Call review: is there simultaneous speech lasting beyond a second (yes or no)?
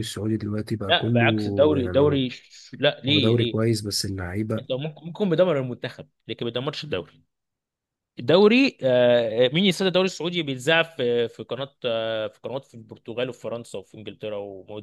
yes